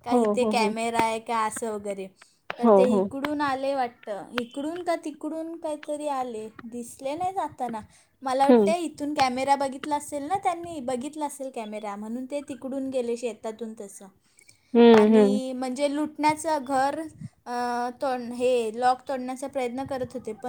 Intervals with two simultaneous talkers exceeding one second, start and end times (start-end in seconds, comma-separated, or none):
none